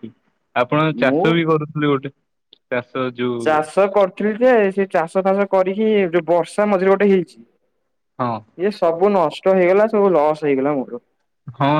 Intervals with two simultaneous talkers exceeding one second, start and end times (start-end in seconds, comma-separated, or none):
none